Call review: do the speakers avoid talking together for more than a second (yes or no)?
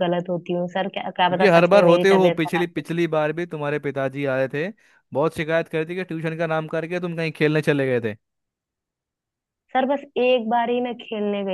no